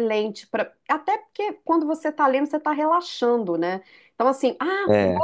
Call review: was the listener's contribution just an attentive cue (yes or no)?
yes